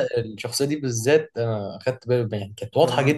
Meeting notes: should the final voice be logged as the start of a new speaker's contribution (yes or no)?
no